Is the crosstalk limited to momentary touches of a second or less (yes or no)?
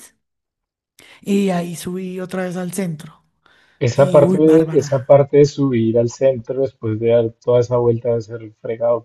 no